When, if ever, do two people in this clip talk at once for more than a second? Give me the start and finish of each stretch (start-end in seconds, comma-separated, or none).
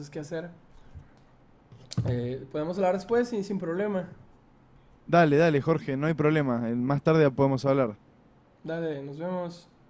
none